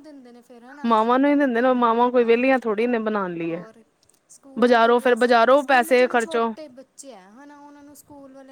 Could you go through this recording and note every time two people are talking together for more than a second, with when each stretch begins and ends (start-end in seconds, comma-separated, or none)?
4.6-6.4